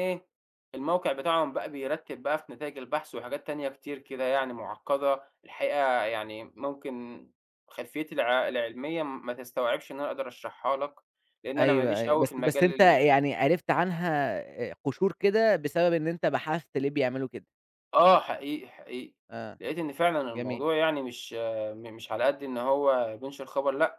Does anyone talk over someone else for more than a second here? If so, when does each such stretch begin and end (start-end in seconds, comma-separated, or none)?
11.6-13.0